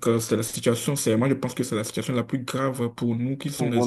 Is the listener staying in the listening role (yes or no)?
no